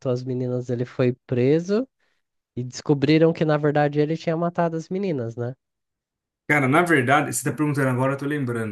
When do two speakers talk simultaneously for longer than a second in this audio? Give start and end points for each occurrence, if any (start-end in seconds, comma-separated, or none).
none